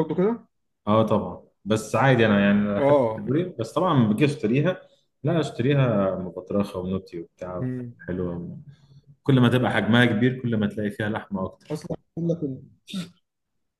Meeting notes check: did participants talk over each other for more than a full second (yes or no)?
no